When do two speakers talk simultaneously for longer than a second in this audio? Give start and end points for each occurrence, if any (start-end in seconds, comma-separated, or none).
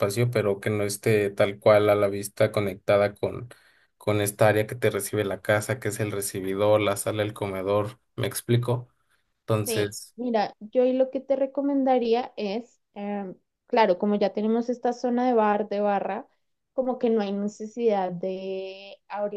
none